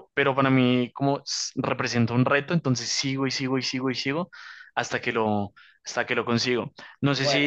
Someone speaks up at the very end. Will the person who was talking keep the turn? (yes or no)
yes